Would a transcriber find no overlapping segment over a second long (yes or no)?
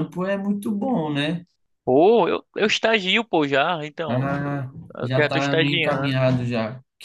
no